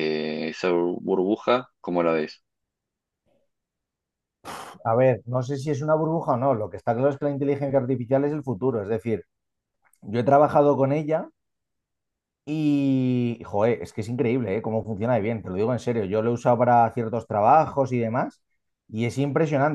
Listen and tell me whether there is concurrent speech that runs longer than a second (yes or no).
no